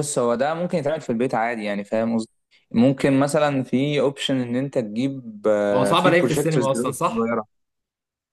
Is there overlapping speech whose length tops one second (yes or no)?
yes